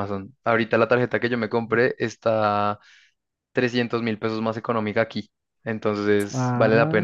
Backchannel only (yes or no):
no